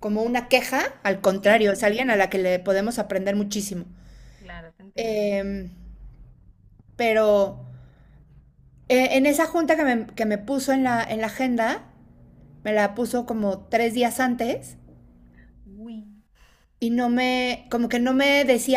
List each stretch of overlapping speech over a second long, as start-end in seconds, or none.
none